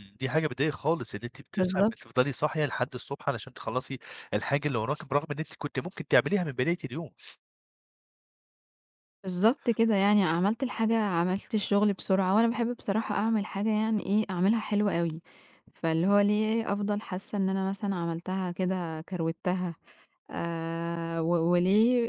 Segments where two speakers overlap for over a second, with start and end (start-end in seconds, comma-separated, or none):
none